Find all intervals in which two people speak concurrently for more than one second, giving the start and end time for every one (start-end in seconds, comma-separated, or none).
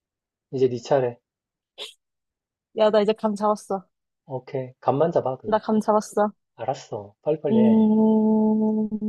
none